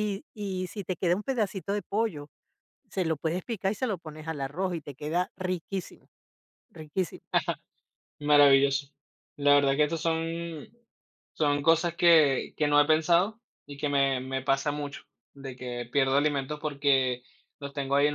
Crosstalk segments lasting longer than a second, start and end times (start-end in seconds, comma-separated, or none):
none